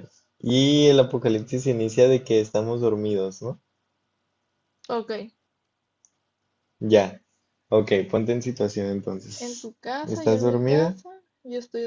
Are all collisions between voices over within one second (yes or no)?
no